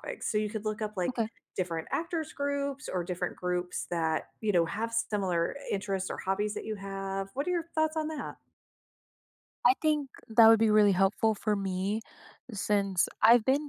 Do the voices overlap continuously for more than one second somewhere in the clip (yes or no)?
no